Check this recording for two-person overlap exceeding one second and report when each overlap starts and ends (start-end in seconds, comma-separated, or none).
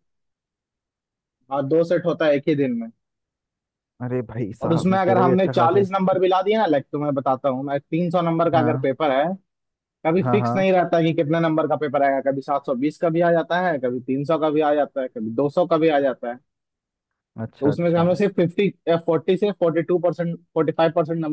4.6-5.9